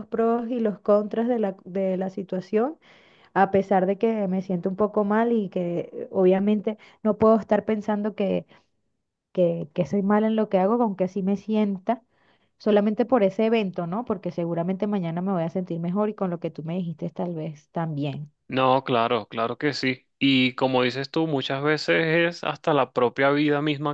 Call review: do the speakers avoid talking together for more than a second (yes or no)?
yes